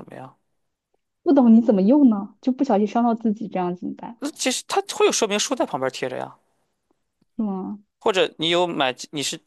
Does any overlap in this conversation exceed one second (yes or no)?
no